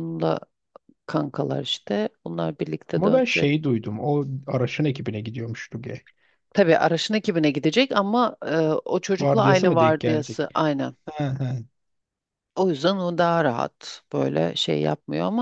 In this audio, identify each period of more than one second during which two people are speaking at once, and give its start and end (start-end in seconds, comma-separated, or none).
9.2-10.5